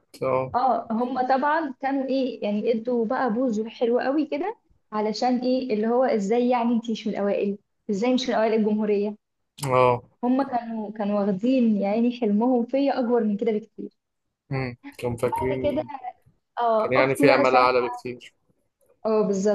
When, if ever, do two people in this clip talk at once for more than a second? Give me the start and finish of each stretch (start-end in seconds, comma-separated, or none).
16.8-18.0